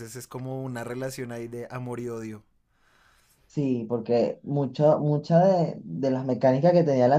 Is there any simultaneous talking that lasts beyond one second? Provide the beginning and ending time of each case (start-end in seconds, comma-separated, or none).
none